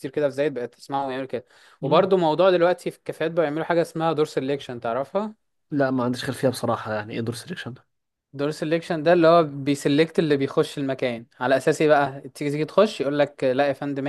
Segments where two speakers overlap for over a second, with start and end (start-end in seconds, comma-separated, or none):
none